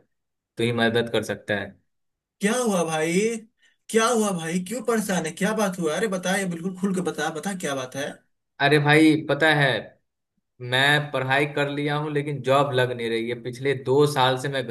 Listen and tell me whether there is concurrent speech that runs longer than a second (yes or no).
no